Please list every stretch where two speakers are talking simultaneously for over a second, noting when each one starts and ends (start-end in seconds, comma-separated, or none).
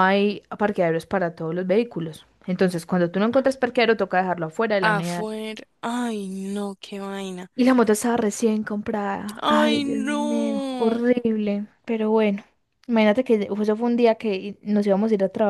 9.4-11.0